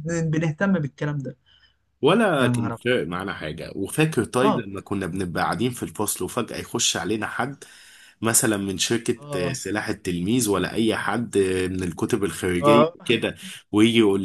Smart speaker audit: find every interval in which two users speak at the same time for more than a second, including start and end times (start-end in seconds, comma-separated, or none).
none